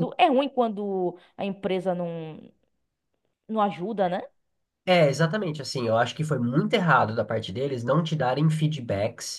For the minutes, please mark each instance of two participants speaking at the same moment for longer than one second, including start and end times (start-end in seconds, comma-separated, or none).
none